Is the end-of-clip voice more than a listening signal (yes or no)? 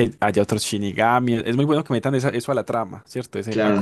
yes